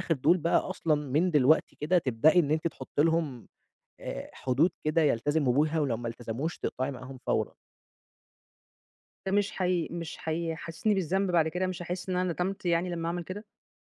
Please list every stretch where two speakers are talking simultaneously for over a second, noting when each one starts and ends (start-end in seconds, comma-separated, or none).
none